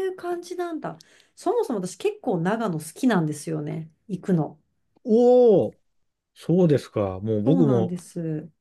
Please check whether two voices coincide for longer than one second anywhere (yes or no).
no